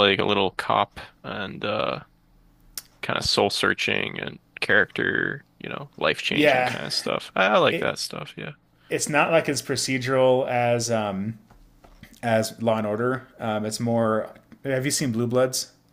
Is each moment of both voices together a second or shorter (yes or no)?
yes